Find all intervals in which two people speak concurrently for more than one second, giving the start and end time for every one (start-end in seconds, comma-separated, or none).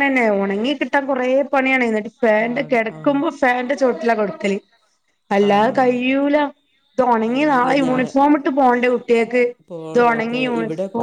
none